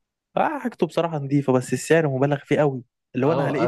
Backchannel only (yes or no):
no